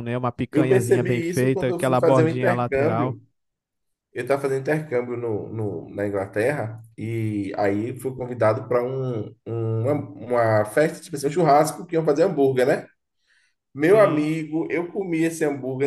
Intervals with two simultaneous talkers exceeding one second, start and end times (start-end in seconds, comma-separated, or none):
0.5-3.2